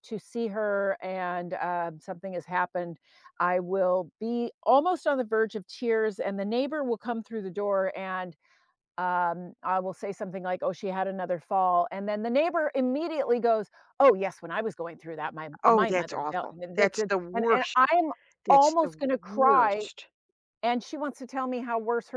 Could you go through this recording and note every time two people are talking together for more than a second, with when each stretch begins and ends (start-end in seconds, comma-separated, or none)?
15.6-17.8, 18.5-19.9